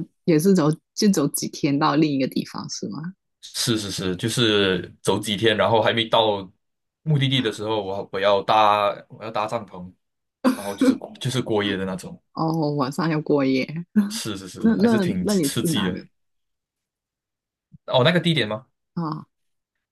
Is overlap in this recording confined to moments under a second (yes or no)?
no